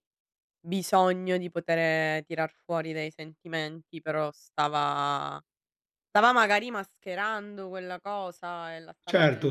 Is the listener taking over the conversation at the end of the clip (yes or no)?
yes